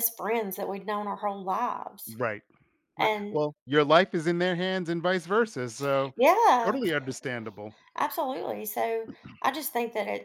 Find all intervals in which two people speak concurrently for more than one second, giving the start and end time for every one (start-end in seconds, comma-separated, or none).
none